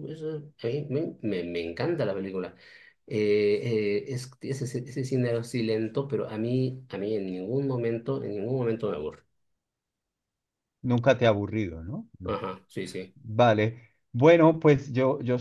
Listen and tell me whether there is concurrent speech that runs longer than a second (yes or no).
no